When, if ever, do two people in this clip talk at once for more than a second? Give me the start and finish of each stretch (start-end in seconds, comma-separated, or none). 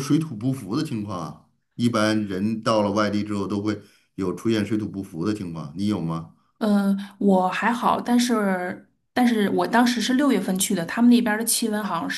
none